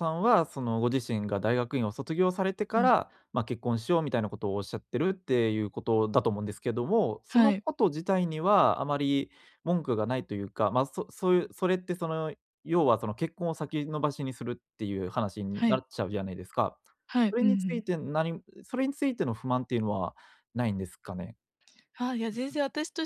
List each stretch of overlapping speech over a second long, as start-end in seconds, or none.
none